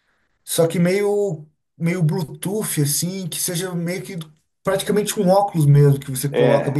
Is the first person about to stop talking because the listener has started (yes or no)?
yes